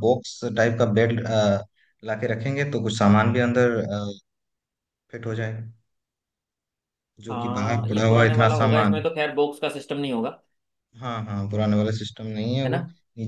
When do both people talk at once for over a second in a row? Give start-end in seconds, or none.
7.3-9.0